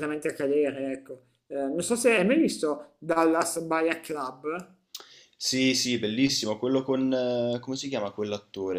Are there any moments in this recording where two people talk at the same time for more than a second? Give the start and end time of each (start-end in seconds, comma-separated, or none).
none